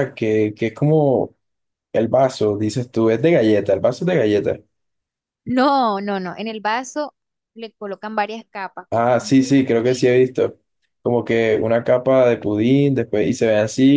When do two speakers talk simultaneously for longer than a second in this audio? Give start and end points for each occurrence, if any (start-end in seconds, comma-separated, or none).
8.9-10.1